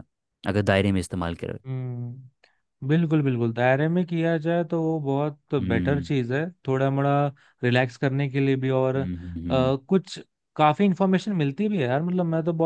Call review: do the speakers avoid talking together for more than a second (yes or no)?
yes